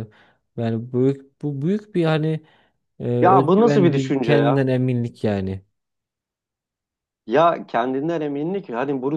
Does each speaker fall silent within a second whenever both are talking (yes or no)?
no